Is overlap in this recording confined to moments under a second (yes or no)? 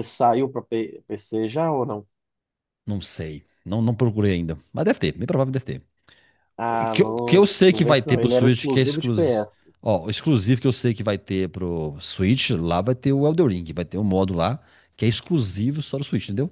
no